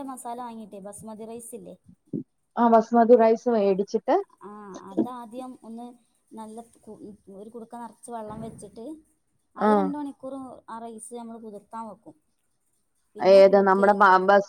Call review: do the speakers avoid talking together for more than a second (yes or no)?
yes